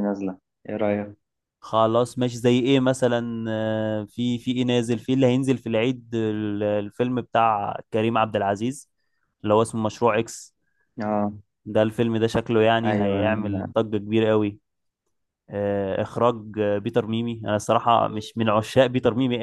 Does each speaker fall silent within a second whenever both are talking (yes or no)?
yes